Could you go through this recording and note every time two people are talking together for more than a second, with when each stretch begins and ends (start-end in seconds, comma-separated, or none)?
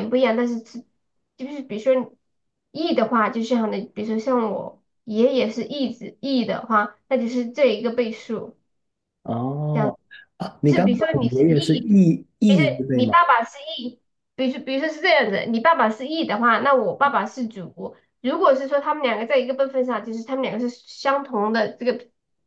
10.6-13.1